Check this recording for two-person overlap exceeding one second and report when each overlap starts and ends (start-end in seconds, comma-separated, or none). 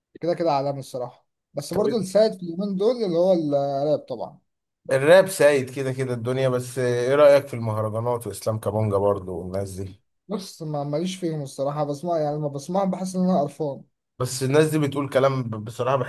none